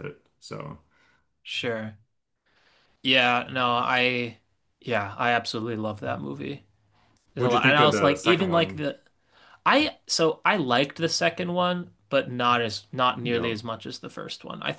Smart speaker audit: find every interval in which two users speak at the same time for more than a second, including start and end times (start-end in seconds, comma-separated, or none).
7.4-8.8